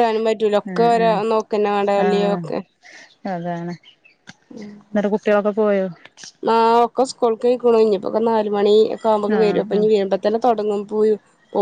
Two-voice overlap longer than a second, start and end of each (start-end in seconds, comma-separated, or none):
none